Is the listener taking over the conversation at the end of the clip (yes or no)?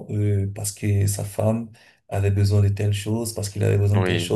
yes